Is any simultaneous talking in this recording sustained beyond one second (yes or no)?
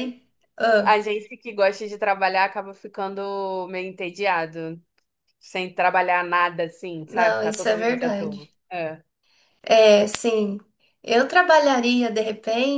yes